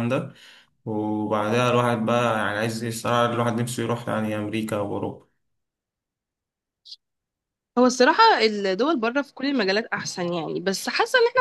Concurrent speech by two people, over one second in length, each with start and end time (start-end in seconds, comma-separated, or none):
none